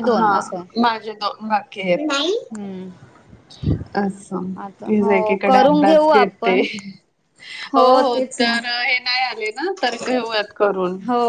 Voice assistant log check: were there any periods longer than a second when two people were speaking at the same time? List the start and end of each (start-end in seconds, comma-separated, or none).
4.9-6.6